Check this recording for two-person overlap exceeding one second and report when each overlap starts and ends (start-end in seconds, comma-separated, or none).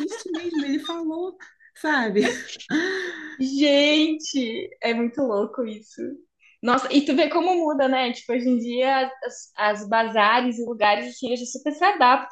none